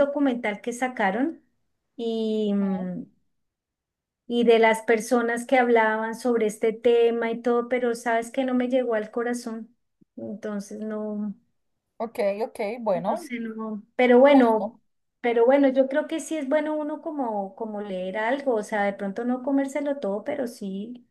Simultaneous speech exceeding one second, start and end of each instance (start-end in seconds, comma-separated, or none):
none